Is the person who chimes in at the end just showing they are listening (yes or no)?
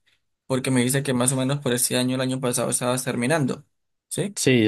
no